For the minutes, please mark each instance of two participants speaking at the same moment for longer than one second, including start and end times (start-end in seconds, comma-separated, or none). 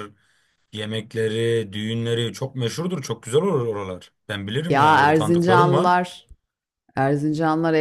4.7-6.0